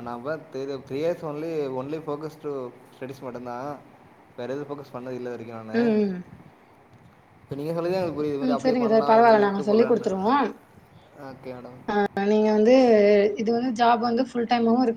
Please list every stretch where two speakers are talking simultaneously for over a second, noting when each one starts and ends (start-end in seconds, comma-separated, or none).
8.4-10.1